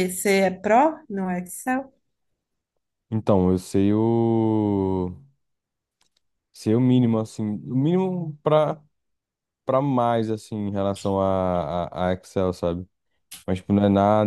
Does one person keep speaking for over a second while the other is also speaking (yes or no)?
no